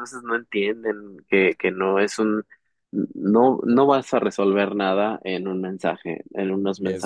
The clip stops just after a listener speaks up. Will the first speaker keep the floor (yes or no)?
yes